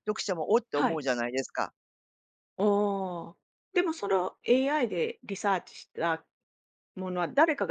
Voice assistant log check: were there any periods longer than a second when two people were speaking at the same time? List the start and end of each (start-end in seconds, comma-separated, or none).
none